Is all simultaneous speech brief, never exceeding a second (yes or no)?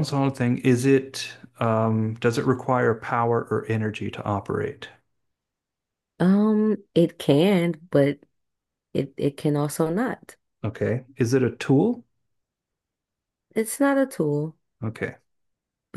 yes